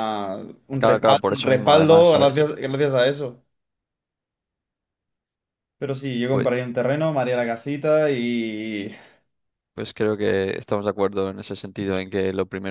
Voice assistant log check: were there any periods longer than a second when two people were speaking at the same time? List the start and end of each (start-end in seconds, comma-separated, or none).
0.8-2.5